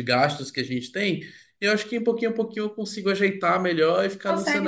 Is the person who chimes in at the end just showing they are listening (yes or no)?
no